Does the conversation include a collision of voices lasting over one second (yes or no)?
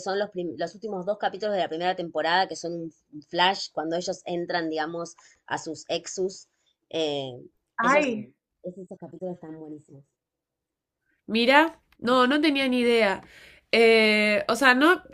no